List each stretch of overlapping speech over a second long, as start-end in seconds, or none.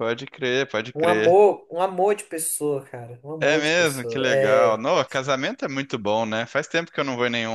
3.4-4.8